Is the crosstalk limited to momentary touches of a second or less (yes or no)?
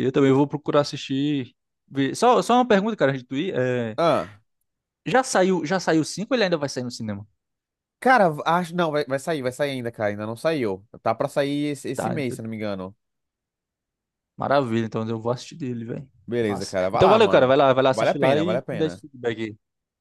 no